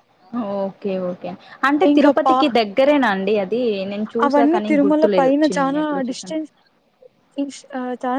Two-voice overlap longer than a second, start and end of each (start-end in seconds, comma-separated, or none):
4.2-6.4